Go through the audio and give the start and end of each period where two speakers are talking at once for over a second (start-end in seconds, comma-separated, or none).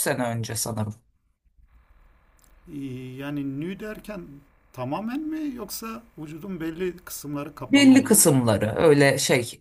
none